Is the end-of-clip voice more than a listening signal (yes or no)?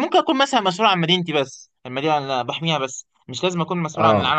no